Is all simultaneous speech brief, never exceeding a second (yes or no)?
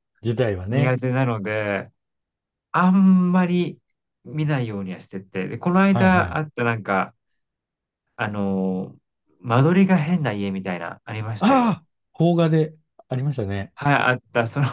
yes